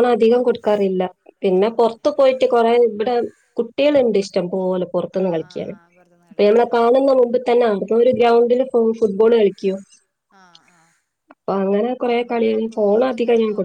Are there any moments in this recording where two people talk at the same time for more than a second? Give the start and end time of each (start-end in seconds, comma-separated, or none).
none